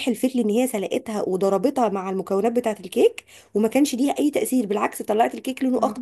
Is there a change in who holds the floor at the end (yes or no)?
no